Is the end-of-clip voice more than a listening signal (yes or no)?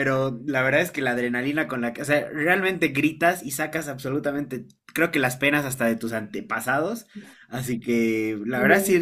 no